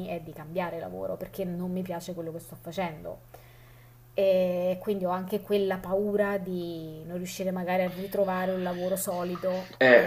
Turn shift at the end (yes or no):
yes